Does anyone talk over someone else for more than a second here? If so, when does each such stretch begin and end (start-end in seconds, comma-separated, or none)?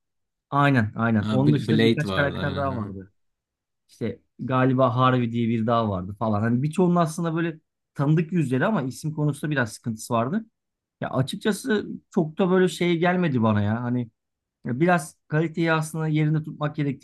1.2-2.9